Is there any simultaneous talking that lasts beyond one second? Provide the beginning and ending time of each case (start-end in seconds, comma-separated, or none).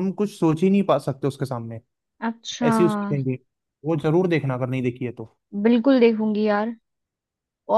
none